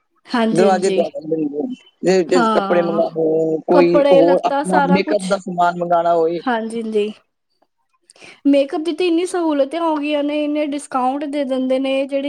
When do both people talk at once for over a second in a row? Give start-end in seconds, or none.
3.7-5.3